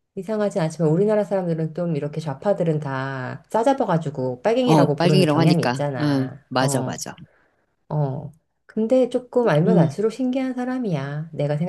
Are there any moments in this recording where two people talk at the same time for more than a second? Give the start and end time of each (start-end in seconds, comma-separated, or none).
4.6-7.0